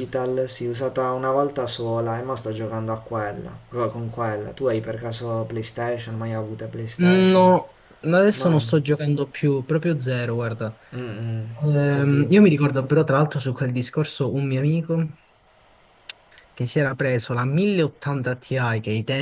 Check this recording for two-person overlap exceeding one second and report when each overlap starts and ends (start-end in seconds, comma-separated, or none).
none